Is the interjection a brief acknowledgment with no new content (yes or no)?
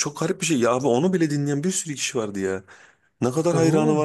yes